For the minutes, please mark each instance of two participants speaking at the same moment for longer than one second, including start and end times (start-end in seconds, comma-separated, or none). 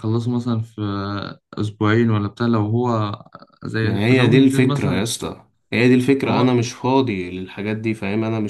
3.8-5.0